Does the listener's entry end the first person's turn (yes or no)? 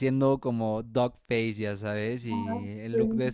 no